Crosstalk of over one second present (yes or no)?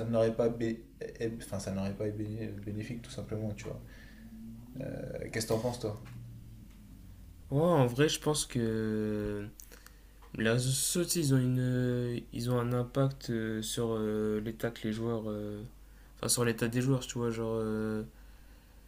no